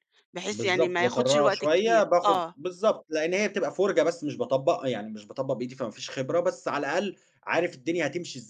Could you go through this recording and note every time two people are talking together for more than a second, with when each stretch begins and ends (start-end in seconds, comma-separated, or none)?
0.5-2.5